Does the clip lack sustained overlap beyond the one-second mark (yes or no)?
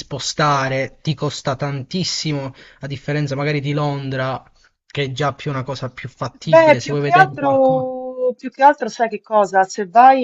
no